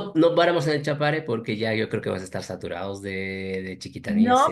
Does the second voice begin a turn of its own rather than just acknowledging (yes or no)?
yes